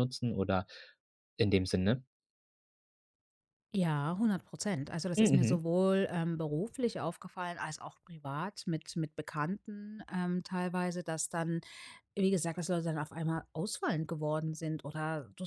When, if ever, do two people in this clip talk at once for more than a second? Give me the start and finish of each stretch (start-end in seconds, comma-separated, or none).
none